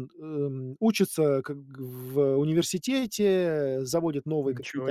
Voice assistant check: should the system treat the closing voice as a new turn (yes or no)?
no